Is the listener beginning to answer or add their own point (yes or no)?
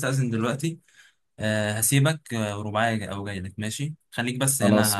no